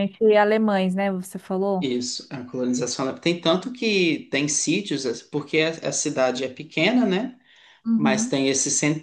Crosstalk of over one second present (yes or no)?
no